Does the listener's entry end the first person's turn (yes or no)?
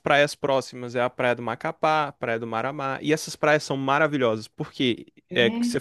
no